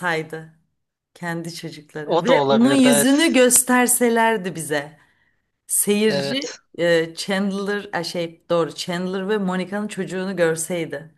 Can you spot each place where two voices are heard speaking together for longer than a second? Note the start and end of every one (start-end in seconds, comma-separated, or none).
2.0-3.4